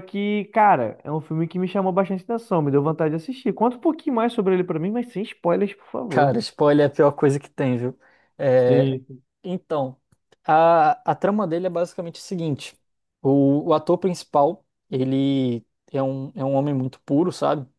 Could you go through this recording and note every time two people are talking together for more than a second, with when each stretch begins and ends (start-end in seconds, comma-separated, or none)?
none